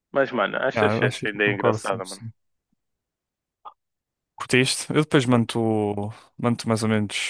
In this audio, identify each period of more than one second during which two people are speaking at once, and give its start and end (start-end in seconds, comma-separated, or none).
0.7-2.2